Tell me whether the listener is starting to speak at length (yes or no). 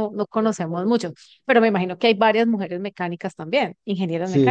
yes